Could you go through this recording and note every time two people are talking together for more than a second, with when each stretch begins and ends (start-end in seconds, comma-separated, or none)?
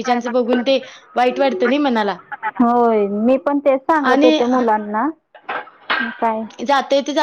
none